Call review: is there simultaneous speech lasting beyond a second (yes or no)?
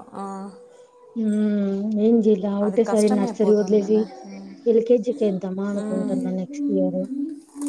yes